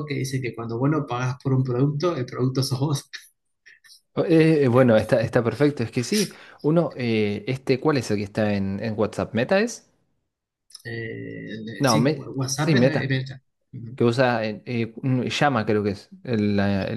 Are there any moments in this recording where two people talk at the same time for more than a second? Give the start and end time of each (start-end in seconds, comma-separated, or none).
11.8-13.2